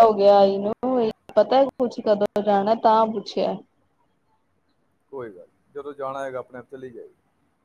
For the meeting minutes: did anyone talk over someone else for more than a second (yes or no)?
no